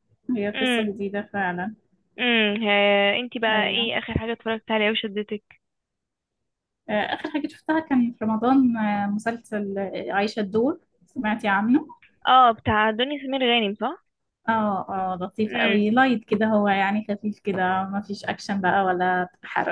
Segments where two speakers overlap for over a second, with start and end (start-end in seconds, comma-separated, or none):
none